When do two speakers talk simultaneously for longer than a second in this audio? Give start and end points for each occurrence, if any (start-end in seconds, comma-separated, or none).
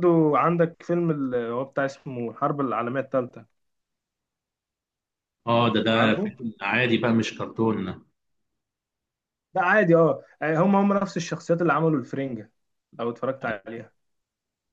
none